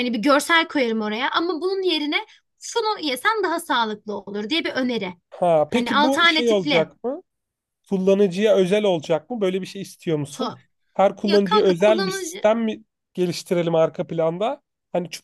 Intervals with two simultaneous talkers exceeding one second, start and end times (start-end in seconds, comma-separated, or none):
5.7-6.9, 11.2-12.4